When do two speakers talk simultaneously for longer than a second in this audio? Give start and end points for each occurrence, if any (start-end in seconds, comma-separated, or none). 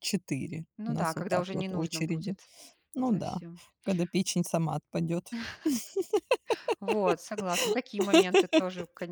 0.8-2.4